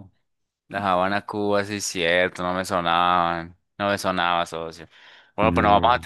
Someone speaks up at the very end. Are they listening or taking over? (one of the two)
listening